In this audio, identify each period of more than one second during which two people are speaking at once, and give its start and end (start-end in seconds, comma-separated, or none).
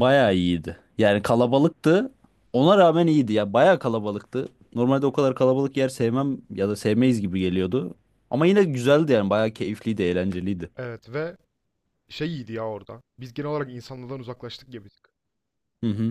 none